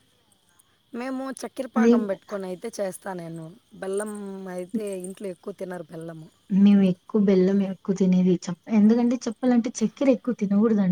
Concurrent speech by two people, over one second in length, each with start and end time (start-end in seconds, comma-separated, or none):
none